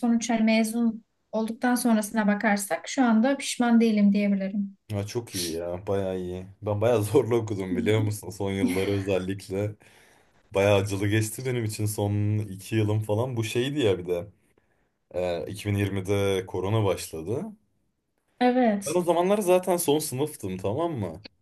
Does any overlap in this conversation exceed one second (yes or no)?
no